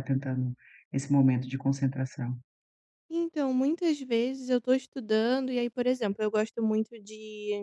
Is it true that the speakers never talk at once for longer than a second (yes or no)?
yes